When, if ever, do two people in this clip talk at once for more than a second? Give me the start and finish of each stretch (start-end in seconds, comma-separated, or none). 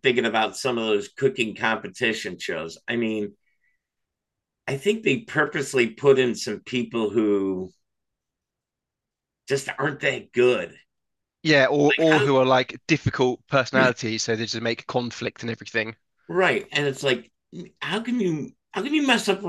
none